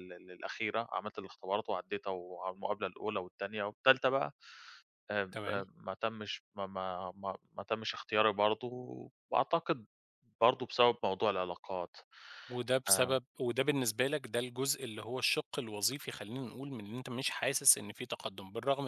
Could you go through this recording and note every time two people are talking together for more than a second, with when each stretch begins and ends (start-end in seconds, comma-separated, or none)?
none